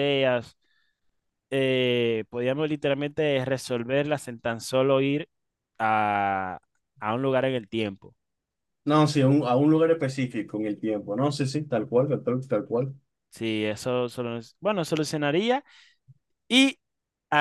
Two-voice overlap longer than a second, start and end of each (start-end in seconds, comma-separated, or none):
none